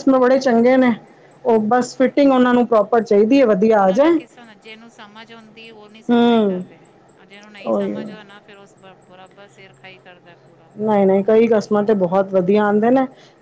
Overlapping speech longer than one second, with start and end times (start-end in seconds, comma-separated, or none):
none